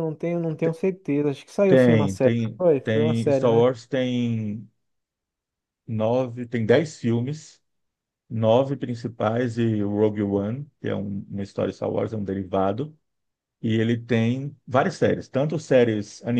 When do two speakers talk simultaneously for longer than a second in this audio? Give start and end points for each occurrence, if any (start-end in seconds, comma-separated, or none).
1.7-3.7